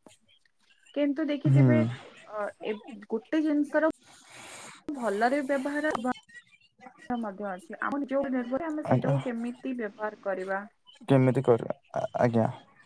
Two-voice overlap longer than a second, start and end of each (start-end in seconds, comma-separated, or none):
none